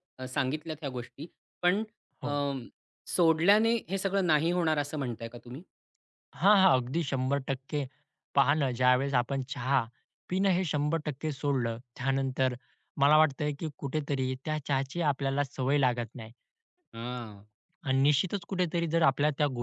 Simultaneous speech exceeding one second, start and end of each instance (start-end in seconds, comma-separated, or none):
none